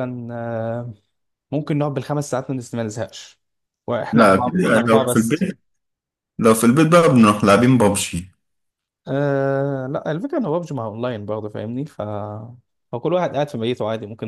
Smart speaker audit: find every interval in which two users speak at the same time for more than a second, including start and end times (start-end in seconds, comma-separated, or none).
4.1-5.5